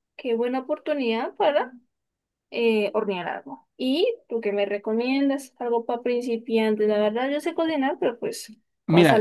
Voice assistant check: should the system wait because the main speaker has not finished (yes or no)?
no